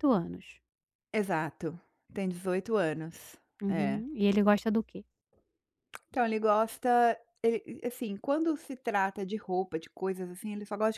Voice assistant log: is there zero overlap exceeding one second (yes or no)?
yes